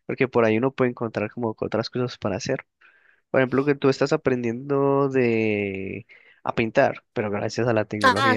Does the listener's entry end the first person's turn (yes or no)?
yes